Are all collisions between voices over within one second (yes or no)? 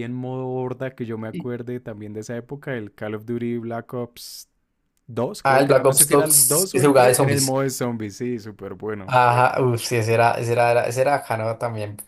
no